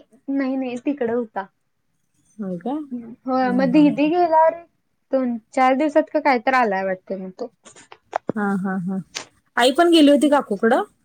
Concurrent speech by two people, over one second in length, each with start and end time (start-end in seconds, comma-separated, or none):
none